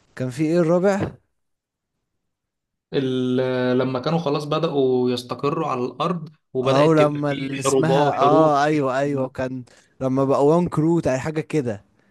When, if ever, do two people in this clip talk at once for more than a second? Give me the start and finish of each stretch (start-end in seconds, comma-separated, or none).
6.6-8.6